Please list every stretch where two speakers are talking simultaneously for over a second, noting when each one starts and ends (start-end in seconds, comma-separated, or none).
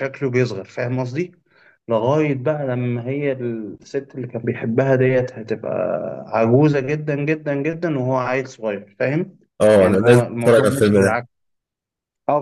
9.8-11.2